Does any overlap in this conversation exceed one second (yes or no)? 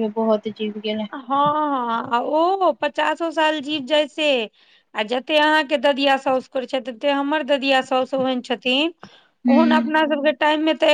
no